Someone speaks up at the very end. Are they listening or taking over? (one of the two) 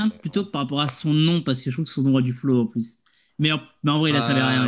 taking over